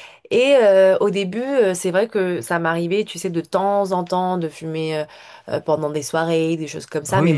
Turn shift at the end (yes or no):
yes